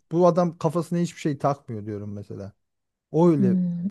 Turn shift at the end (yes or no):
yes